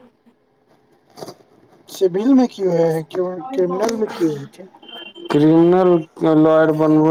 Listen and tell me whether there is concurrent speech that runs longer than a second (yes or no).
no